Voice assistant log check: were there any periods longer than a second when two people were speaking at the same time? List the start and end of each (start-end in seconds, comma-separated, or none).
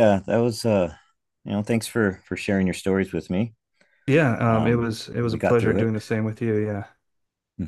4.5-5.9